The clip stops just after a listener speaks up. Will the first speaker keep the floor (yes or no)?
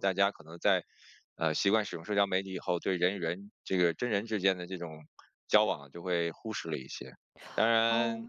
yes